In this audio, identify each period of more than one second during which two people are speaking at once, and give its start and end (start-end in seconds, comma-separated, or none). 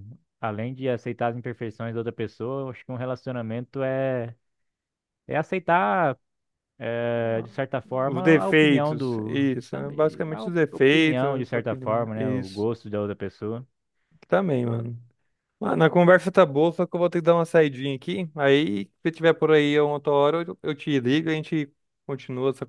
8.1-12.7